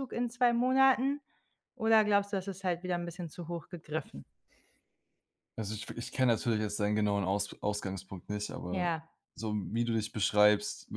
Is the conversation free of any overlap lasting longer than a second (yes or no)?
yes